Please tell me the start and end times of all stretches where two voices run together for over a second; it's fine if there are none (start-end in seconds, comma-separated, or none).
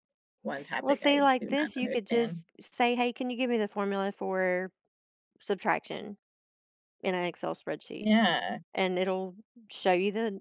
0.8-2.4